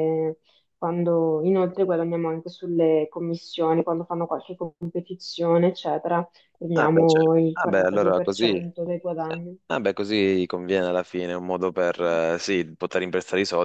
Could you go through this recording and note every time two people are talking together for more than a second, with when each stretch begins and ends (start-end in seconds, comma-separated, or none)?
6.7-8.7